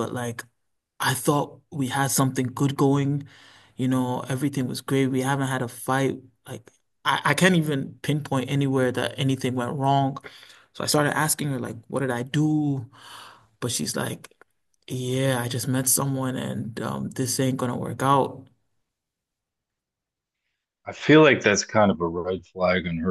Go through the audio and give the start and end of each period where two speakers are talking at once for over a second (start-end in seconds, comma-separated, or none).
none